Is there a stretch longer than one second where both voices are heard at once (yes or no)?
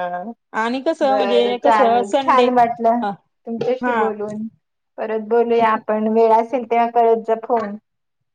yes